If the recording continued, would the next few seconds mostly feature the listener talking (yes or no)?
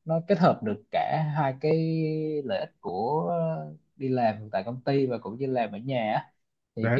no